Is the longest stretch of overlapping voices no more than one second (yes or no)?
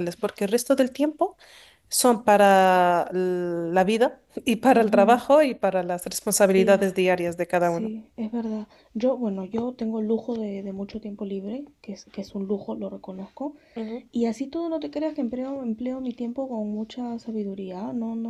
yes